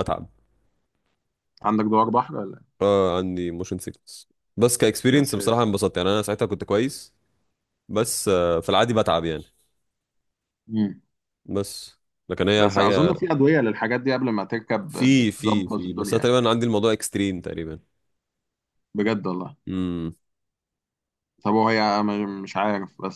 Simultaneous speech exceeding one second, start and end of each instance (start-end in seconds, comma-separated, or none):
14.9-16.4